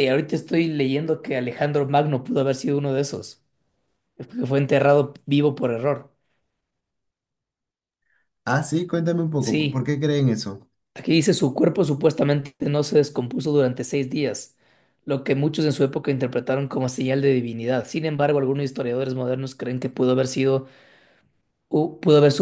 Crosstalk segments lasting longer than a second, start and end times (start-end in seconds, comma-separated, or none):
none